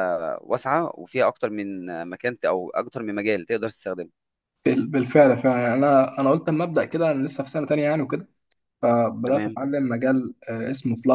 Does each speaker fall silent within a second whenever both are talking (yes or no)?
yes